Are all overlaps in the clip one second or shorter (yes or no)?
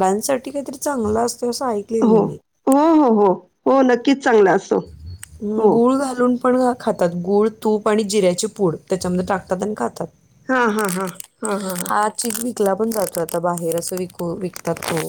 yes